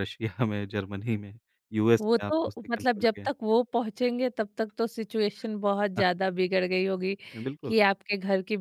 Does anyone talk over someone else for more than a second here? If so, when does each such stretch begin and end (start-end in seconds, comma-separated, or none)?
2.0-3.3